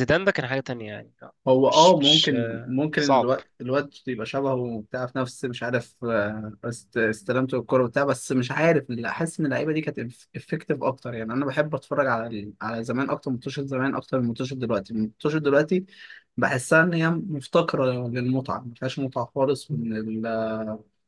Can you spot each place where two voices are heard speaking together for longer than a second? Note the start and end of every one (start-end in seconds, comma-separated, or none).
1.5-3.3